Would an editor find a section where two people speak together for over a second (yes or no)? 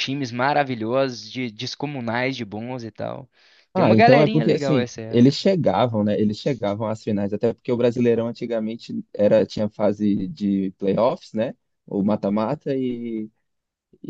yes